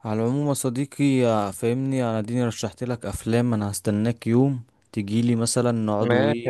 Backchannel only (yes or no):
yes